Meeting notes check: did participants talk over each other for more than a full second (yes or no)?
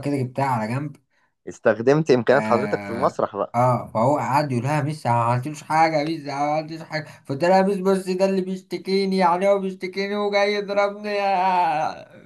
no